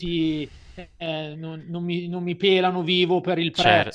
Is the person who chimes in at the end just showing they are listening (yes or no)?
no